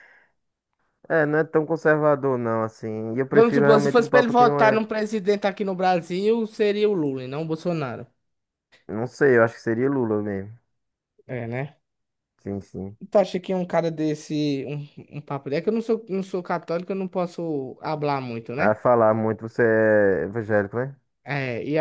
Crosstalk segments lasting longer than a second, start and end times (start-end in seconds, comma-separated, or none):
3.3-4.8